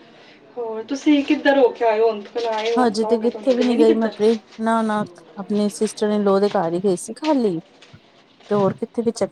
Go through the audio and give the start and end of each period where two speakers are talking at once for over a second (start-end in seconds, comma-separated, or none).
2.9-4.2